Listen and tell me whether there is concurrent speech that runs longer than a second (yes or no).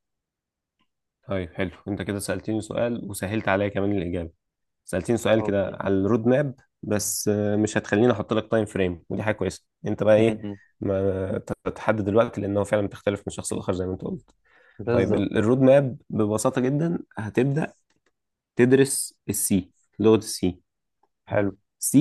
no